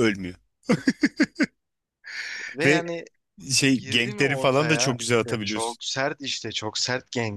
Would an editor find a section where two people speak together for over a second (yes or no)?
yes